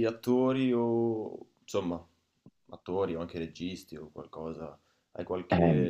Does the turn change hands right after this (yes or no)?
no